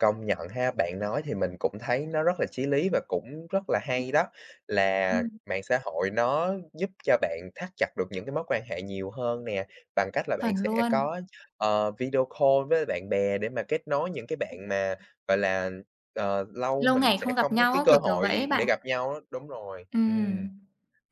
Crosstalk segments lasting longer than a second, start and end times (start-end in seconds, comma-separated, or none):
16.8-18.6